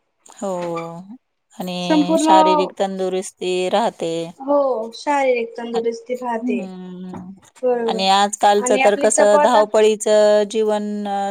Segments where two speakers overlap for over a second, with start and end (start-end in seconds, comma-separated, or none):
7.9-9.6